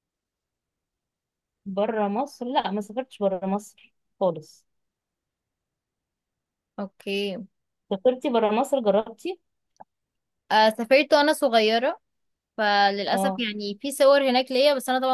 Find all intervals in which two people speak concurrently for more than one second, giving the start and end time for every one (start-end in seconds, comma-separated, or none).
none